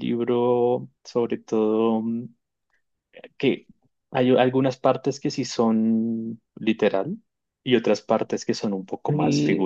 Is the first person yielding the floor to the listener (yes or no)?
yes